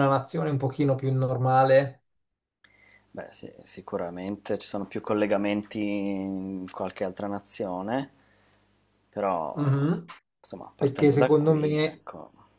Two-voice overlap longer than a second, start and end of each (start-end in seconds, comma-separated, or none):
10.8-12.1